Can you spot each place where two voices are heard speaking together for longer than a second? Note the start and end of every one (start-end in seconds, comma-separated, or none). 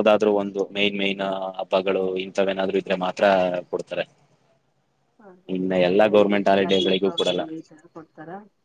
5.8-7.4